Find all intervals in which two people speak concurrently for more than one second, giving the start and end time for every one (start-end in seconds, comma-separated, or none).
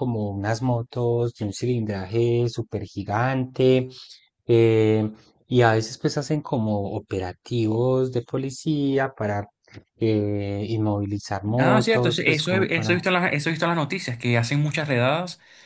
11.6-13.0